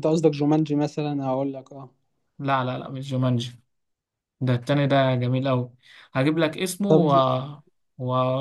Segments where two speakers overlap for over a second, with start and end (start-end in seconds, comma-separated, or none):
none